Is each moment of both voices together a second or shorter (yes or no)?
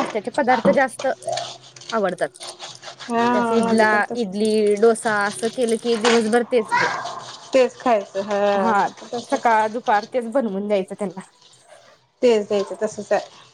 no